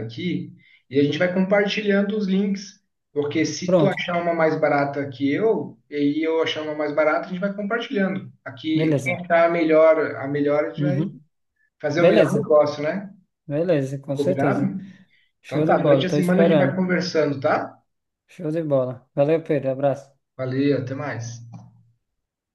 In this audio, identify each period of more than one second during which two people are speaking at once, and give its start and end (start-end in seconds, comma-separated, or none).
15.4-16.8